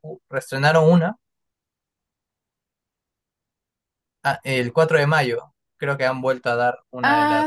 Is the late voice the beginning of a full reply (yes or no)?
yes